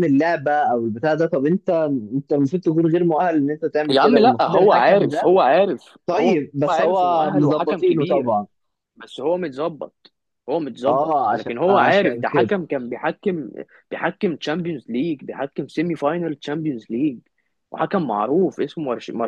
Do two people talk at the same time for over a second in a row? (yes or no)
yes